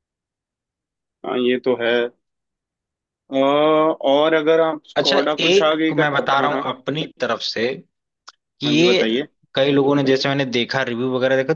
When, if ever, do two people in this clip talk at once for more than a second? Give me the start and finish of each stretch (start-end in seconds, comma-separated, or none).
5.0-6.7